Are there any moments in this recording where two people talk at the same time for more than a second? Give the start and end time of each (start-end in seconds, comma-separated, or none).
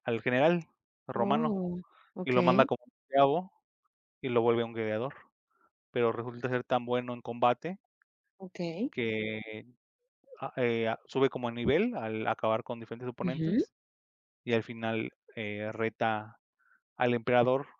none